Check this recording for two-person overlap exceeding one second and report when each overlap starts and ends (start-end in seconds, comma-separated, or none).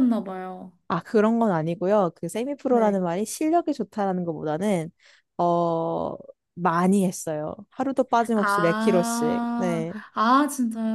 8.4-9.9